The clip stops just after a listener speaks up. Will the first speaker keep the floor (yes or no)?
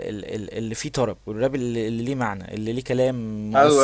no